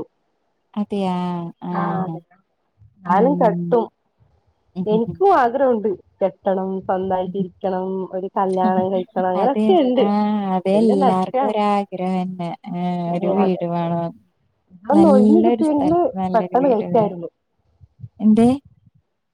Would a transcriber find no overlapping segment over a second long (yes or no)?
no